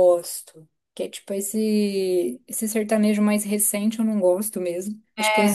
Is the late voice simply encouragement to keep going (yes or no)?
yes